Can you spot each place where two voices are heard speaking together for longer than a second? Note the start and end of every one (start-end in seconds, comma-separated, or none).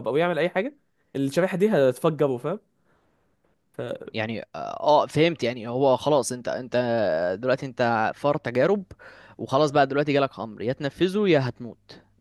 none